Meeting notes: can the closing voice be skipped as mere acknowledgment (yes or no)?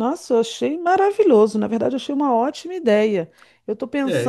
yes